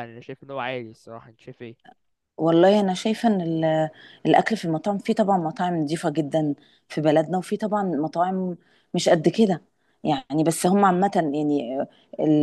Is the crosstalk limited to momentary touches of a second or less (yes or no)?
yes